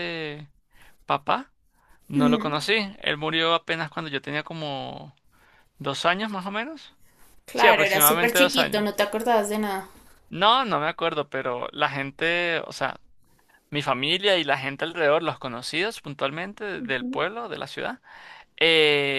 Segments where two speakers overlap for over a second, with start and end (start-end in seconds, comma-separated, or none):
7.5-8.8